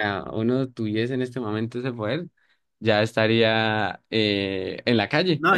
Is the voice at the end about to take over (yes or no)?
yes